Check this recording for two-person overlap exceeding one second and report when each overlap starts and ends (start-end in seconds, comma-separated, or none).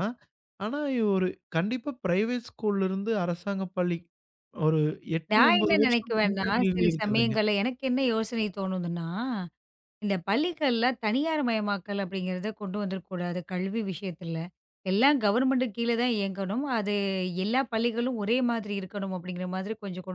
5.3-7.3